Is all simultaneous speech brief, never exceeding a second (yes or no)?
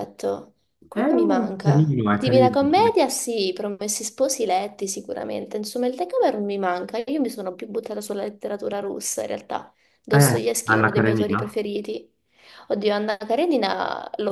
no